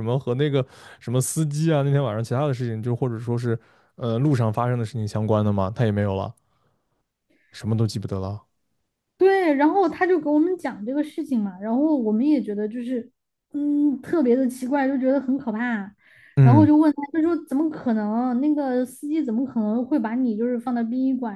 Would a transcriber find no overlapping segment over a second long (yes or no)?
yes